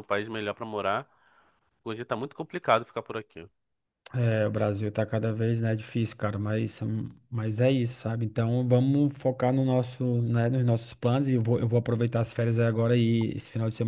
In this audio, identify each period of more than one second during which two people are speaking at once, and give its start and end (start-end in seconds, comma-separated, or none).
none